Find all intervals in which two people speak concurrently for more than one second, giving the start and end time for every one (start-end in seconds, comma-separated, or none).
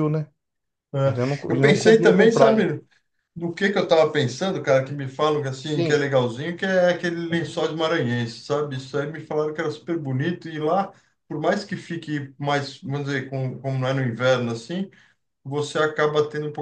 1.5-2.7